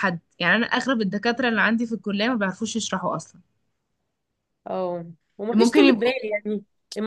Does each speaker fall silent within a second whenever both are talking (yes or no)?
yes